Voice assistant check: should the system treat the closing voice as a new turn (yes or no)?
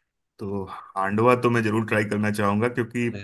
no